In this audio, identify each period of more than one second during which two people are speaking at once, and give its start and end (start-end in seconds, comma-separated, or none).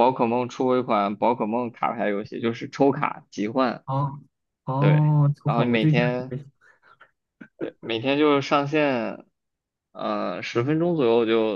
4.8-6.3